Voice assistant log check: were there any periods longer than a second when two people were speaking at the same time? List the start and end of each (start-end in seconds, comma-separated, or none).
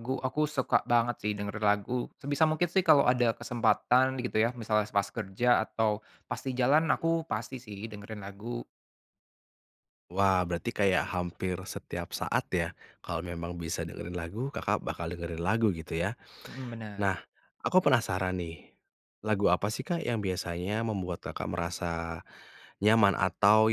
none